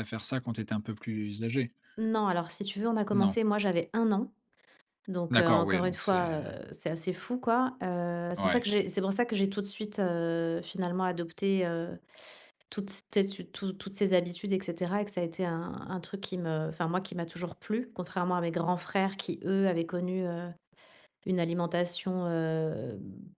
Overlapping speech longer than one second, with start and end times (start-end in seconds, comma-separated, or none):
5.3-6.5